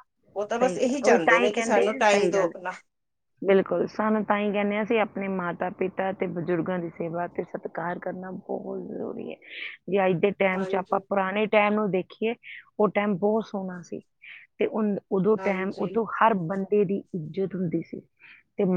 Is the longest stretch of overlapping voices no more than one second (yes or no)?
no